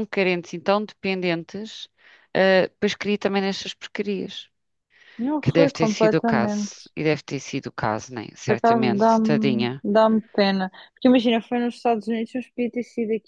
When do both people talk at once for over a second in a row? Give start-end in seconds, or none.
5.4-6.9, 8.5-9.8